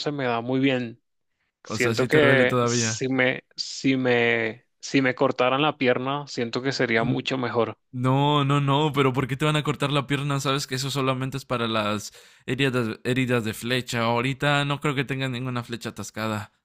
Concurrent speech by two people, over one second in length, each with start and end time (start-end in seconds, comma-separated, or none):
1.6-3.0